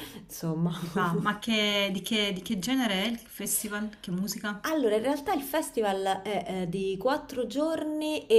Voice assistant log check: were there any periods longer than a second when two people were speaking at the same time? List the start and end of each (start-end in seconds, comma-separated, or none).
none